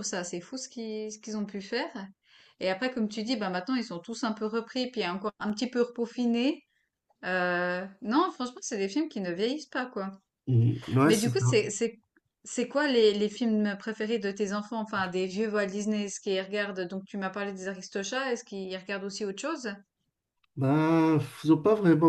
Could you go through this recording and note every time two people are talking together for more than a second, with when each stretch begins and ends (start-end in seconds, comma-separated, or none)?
none